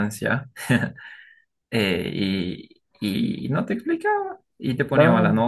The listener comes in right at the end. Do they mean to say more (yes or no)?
no